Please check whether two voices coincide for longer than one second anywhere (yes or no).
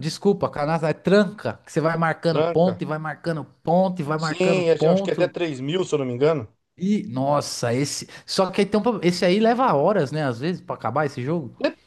yes